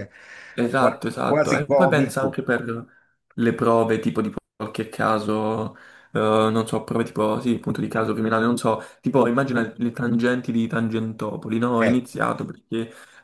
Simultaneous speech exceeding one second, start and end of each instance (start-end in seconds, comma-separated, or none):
0.8-2.4